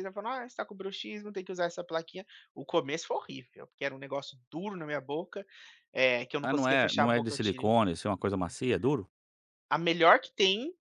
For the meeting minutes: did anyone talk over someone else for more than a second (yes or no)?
yes